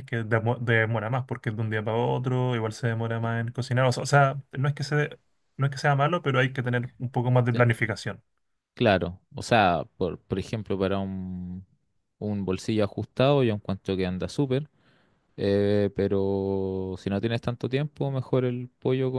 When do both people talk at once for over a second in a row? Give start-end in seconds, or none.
none